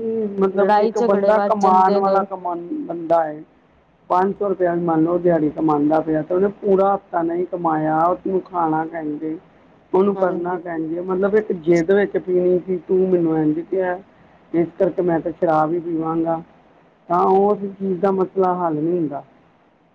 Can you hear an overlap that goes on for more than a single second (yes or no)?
yes